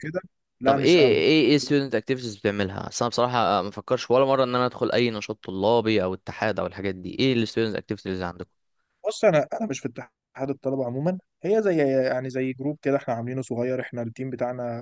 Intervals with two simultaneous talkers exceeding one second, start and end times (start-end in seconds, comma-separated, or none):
none